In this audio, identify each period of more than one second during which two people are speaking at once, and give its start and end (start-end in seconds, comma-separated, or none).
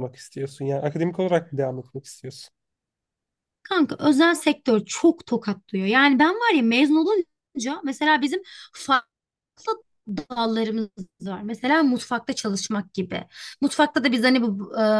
none